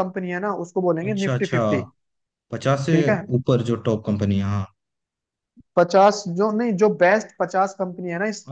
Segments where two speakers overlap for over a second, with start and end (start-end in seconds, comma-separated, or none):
none